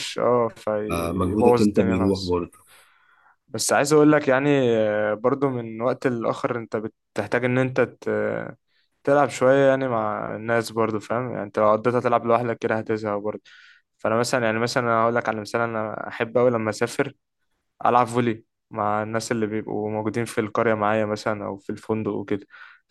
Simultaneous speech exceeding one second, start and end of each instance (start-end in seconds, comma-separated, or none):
0.9-2.4